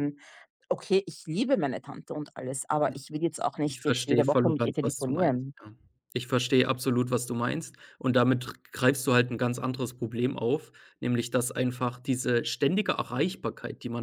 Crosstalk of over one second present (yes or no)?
yes